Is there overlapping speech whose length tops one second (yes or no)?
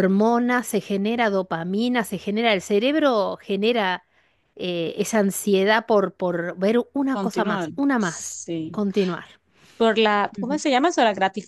yes